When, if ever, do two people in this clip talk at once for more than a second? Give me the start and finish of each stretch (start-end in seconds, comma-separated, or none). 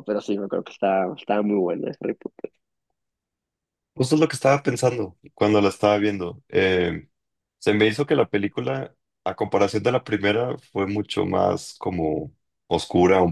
none